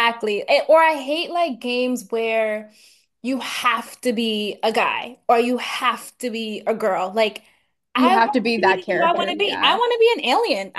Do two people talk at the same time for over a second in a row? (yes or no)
yes